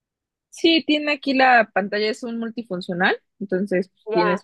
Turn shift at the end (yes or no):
yes